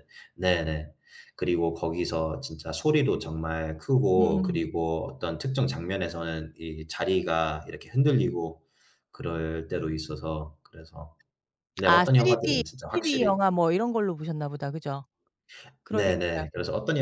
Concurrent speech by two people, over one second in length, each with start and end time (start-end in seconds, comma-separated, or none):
11.8-13.4